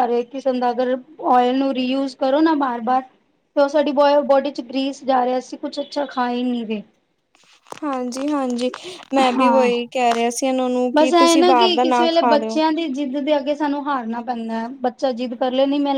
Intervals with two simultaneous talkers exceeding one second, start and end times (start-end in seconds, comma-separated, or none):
10.9-12.6